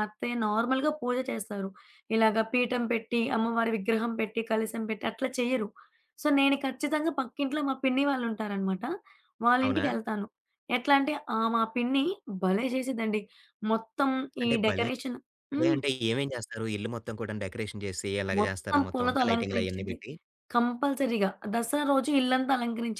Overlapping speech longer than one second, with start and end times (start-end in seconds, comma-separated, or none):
18.4-20.0